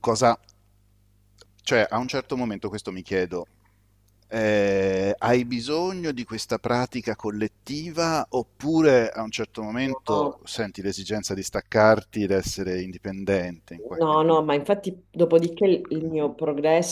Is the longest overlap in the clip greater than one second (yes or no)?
no